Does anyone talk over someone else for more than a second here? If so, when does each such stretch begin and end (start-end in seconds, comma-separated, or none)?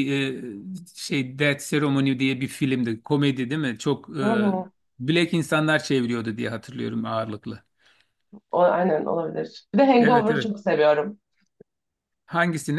none